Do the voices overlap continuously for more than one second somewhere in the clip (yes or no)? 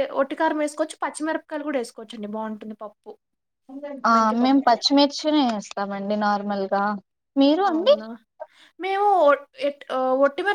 no